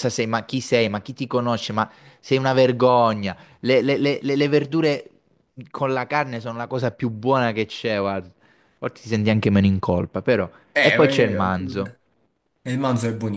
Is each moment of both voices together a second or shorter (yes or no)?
no